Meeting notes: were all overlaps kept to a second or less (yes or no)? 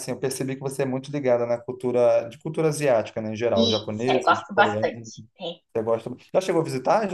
no